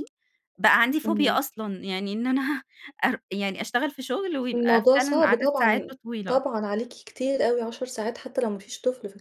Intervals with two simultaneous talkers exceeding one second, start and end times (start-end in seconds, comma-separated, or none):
4.5-6.4